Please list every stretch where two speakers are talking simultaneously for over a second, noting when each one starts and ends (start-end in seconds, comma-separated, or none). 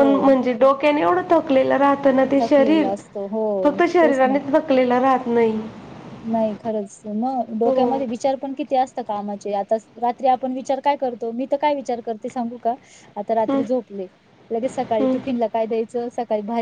none